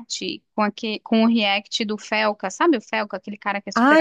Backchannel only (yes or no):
no